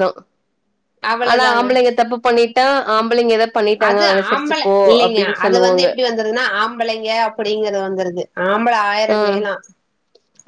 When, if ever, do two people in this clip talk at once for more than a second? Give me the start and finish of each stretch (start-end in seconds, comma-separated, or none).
none